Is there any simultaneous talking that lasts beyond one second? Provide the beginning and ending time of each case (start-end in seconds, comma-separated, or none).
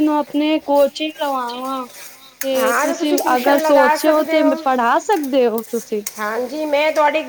2.6-4.6